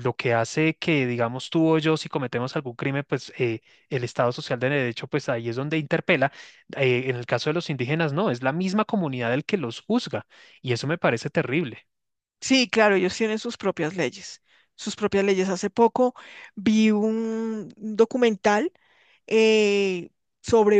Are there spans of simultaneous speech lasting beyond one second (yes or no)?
no